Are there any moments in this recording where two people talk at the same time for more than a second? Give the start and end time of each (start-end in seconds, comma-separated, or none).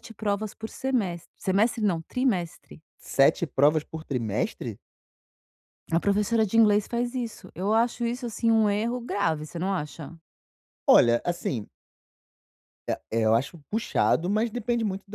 none